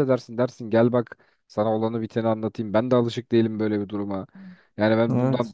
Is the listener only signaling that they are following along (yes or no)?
yes